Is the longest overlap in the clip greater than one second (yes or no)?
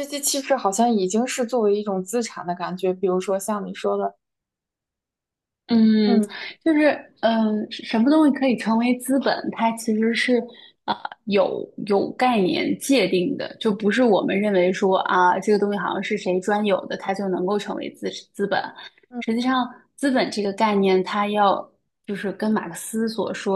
no